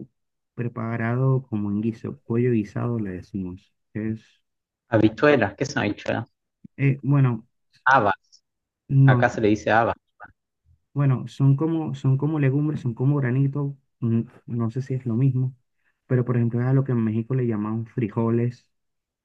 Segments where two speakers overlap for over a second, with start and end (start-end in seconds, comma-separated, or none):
none